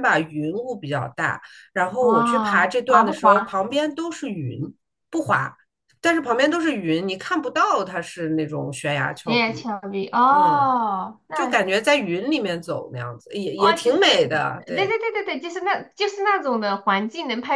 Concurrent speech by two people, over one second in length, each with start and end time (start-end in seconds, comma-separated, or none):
2.0-3.6, 13.6-14.9